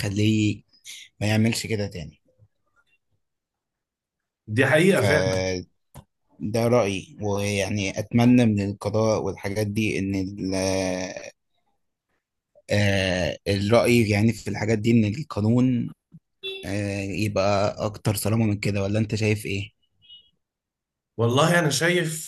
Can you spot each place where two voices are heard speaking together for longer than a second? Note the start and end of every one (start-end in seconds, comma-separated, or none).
none